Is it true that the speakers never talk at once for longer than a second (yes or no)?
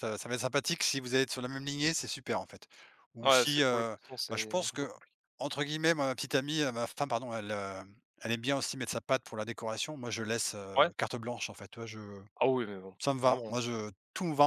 no